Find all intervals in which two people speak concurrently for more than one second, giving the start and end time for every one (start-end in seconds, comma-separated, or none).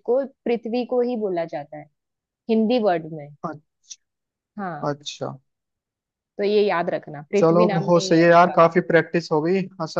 7.4-8.6